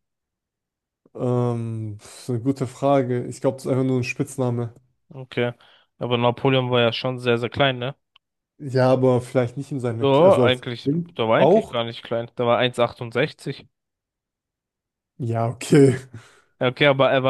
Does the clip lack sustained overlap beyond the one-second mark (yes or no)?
no